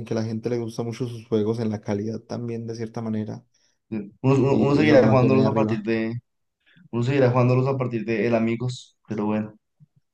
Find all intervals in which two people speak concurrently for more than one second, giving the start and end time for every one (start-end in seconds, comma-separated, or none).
4.5-5.8